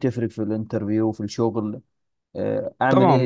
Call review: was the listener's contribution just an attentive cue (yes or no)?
no